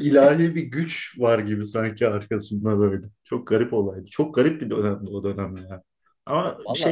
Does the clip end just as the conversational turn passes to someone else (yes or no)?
no